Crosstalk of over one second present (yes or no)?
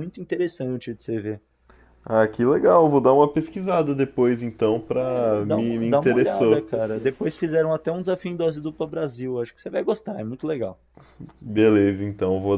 yes